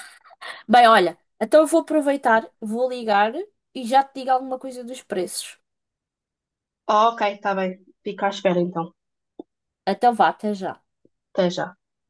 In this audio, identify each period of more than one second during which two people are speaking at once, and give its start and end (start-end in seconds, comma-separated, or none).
none